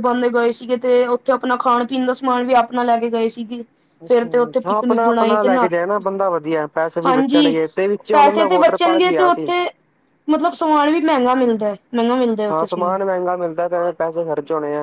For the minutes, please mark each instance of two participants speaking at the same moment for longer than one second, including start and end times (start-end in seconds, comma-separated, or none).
4.1-5.7, 8.1-9.5